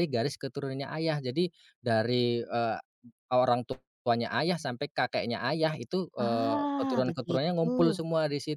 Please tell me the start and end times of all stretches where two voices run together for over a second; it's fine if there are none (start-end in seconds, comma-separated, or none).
6.2-8.0